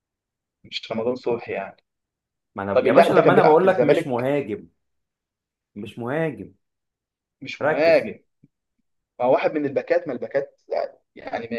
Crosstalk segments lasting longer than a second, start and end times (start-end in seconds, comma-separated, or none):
2.7-4.3